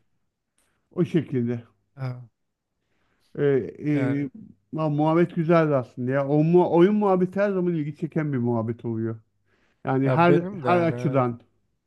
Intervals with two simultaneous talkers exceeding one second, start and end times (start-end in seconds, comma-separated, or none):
10.0-11.2